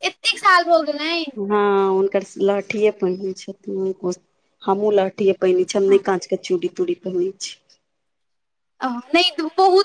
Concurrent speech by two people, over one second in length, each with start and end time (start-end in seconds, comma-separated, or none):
none